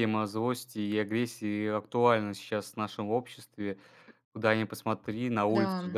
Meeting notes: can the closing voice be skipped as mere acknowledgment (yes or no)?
yes